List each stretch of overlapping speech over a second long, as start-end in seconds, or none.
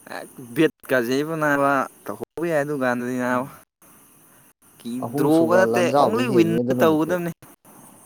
5.2-7.1